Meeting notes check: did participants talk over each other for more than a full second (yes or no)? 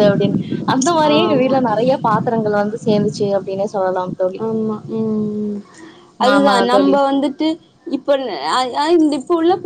no